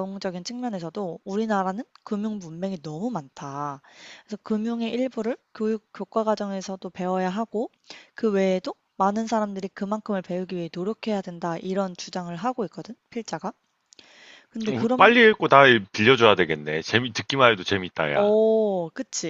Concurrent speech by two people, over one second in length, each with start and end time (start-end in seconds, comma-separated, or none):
none